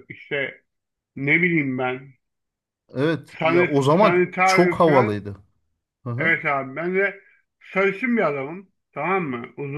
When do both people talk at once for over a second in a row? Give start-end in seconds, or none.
3.3-5.2